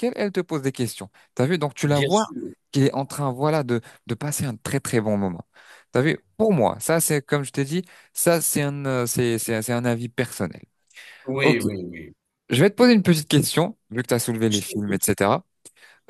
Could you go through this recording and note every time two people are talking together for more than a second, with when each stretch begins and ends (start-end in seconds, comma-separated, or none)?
none